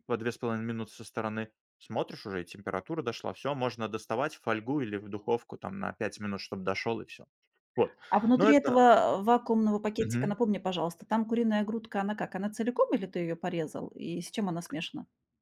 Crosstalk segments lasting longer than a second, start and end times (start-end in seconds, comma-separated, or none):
none